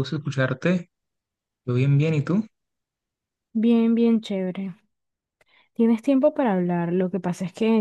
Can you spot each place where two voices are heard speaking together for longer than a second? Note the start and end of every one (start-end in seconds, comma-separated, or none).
none